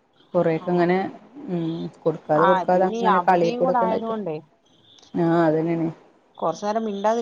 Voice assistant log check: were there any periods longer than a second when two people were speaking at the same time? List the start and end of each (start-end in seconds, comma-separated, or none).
2.5-4.1